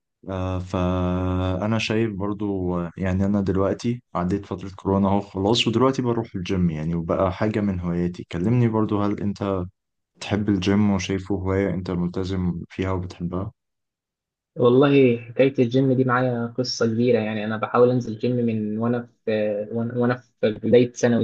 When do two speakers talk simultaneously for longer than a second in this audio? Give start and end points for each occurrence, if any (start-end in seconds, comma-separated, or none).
none